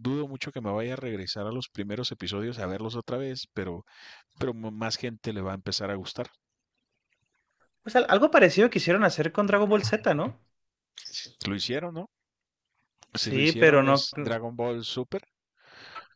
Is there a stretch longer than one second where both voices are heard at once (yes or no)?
yes